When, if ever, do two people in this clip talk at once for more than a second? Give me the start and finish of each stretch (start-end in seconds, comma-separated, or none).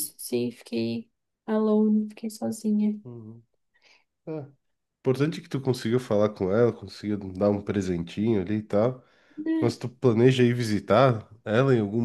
none